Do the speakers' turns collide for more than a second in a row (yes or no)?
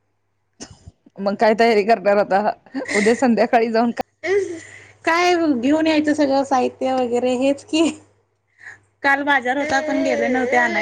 no